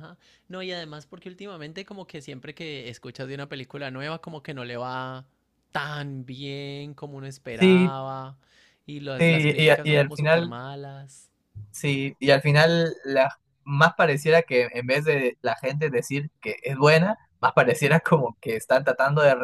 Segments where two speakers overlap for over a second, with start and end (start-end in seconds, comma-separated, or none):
9.2-10.5